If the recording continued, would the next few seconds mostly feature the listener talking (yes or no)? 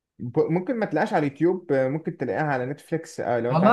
yes